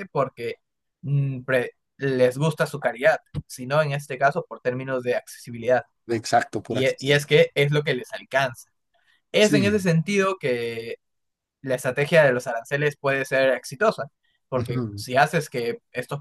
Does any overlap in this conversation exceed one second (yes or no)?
no